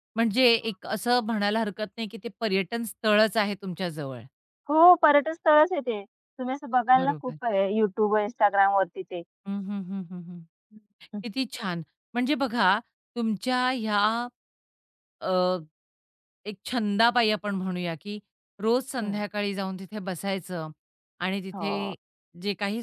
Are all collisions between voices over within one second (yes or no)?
yes